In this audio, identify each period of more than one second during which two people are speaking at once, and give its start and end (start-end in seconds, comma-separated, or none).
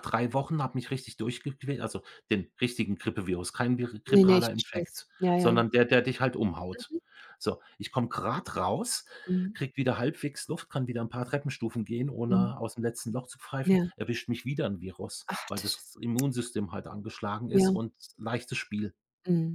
4.1-5.6